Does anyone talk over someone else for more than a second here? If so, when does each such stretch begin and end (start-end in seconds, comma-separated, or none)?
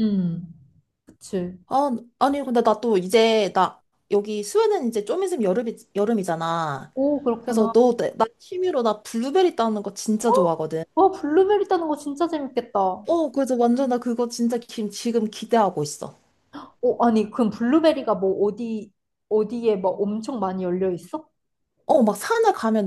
none